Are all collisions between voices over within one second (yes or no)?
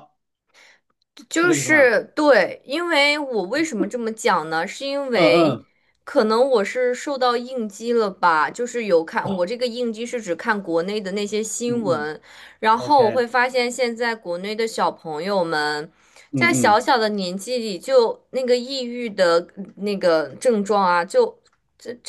yes